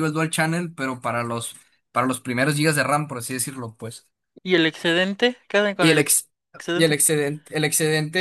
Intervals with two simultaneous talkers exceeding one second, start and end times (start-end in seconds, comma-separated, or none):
none